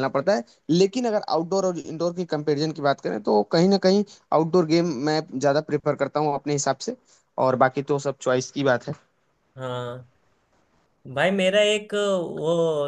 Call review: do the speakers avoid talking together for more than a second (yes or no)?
yes